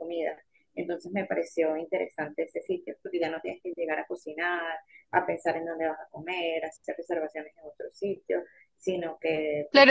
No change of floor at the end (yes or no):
no